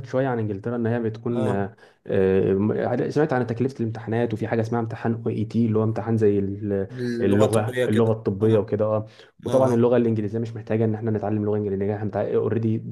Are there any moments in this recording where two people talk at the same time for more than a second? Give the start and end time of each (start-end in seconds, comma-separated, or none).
6.9-8.5